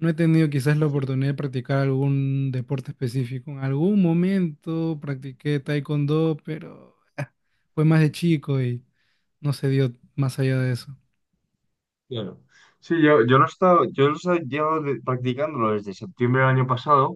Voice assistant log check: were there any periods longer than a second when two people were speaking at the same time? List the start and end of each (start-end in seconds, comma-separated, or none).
none